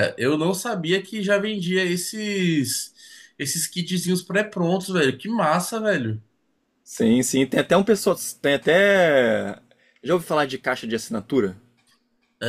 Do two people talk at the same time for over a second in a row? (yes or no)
no